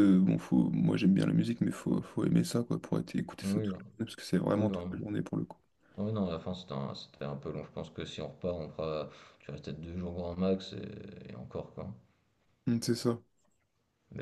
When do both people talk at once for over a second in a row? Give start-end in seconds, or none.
none